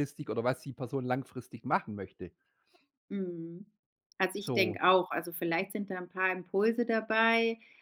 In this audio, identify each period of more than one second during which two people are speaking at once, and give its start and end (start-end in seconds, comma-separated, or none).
none